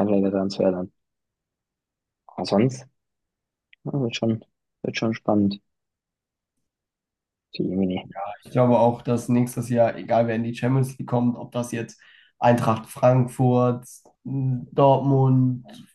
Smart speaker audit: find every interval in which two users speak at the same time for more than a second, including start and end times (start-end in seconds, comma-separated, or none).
none